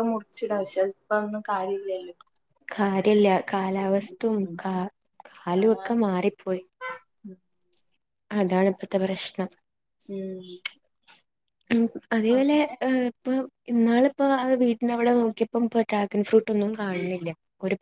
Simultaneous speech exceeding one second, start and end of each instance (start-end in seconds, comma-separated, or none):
none